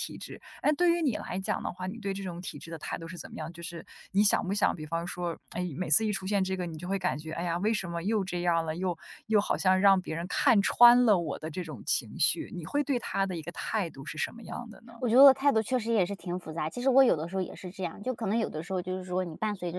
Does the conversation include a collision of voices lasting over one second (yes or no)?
no